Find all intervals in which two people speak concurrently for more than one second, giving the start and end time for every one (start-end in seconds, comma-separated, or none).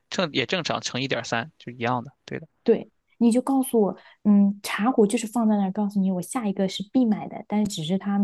none